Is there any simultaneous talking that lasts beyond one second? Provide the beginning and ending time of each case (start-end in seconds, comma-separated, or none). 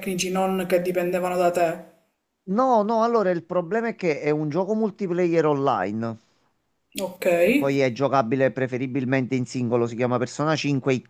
none